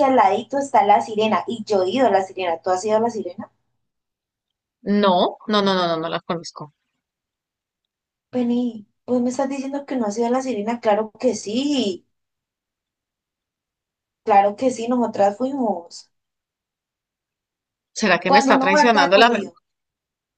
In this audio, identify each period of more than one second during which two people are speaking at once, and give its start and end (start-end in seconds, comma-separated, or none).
18.2-19.5